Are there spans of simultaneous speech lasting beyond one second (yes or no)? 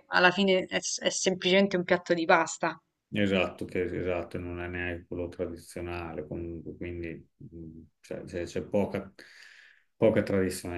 no